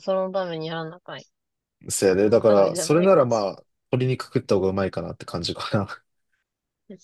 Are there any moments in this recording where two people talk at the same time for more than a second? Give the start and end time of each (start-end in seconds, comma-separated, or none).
2.2-3.5